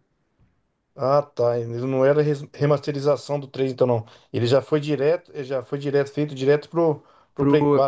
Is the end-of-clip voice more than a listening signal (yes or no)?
yes